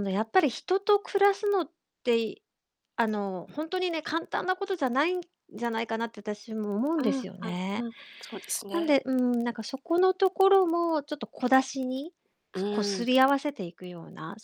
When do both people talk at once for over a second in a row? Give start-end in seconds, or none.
none